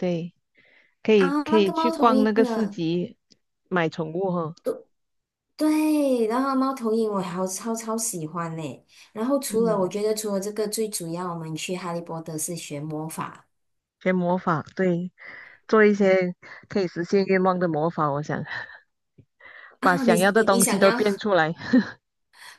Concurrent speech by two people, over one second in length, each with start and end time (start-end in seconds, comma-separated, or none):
1.2-2.8, 19.8-21.0